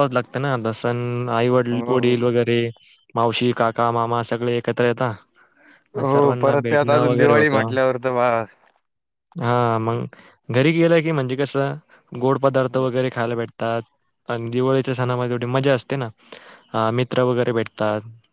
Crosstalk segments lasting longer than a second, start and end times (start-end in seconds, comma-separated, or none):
6.0-7.7